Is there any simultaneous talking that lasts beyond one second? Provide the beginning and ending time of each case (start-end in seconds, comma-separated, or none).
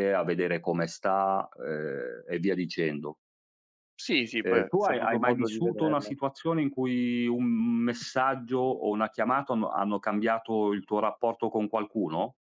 4.5-6.1